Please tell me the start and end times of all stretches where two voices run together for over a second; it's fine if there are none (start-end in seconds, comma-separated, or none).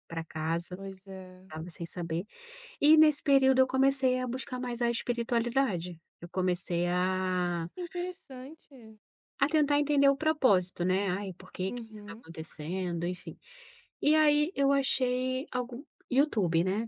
none